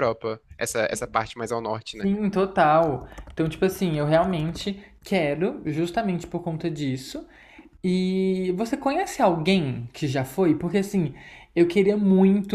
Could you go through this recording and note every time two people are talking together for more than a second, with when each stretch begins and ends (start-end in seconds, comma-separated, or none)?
none